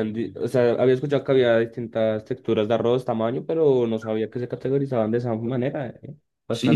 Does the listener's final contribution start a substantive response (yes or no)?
yes